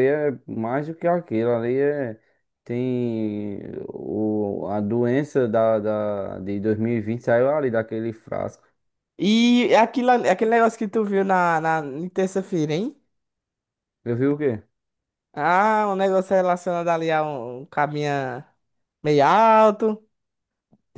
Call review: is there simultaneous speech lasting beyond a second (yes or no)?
no